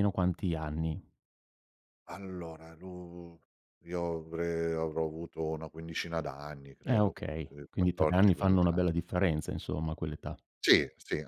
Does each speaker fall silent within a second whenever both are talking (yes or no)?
no